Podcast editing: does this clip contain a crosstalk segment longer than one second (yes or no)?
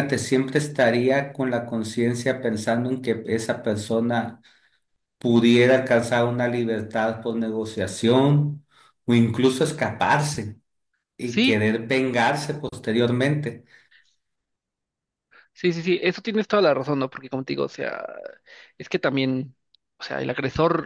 no